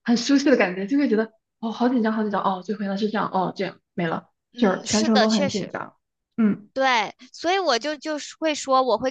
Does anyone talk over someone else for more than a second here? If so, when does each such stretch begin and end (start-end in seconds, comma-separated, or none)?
4.5-5.7